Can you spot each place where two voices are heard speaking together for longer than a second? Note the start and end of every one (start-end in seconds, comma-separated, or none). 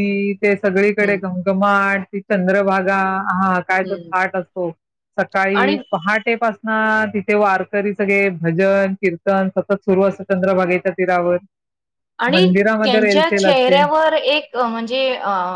none